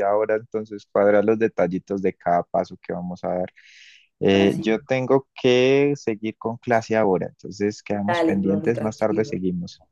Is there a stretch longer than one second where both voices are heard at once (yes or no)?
yes